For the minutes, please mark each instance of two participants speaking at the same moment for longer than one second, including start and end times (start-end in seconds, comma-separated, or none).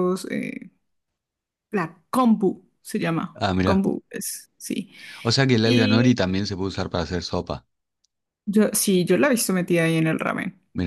none